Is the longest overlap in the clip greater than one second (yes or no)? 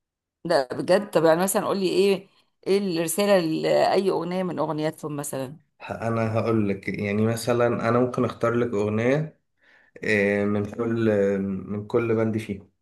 no